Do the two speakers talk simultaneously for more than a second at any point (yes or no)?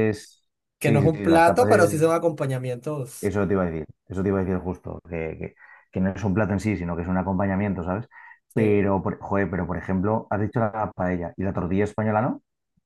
yes